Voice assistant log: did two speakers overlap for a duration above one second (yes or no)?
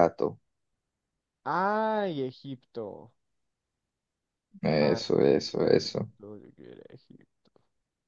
yes